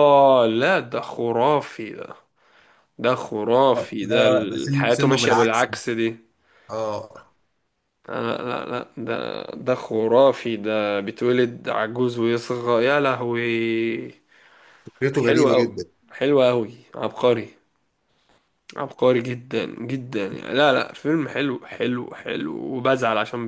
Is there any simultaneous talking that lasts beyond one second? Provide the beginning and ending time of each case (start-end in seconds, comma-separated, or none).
4.0-5.7